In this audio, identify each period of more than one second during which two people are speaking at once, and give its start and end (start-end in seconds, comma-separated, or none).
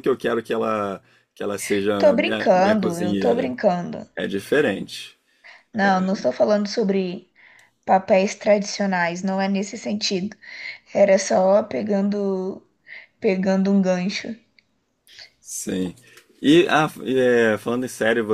2.0-3.5